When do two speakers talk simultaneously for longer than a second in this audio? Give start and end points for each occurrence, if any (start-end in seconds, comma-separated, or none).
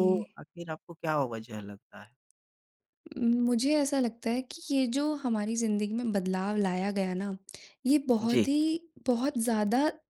none